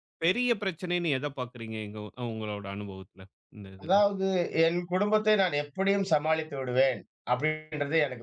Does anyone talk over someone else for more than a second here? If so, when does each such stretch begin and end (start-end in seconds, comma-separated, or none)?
none